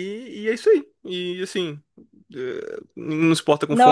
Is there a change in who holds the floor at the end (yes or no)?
no